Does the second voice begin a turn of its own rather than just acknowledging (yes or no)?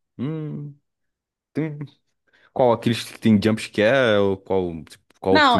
yes